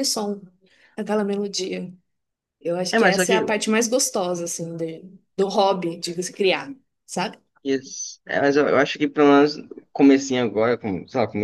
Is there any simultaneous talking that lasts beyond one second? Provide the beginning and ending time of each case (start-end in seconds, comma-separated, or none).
none